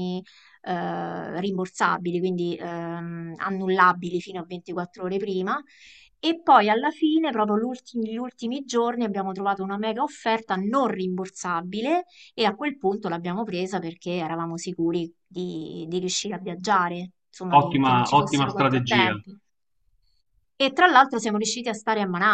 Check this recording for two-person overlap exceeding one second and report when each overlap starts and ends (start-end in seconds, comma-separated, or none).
17.5-19.2